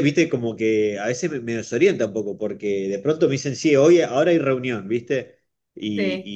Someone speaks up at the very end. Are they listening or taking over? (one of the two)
listening